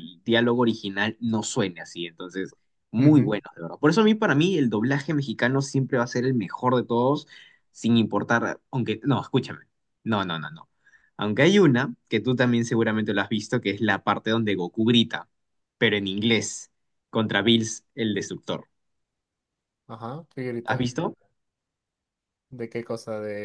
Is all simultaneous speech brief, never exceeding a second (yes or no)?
yes